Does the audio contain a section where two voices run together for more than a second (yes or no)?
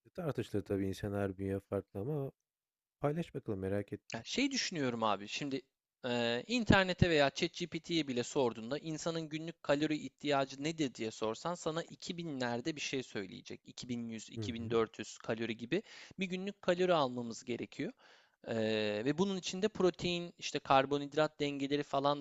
no